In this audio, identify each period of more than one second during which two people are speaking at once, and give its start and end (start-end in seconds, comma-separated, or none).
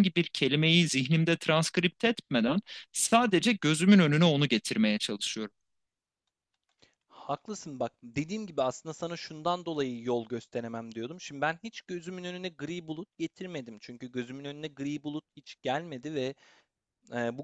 none